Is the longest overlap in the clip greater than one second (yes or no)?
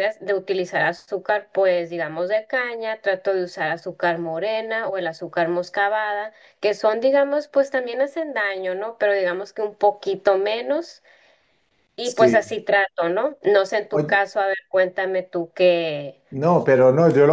no